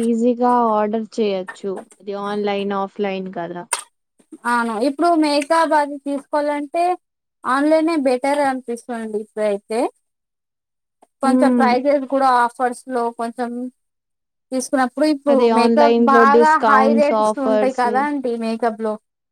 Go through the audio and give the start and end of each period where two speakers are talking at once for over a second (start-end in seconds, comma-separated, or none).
15.3-17.8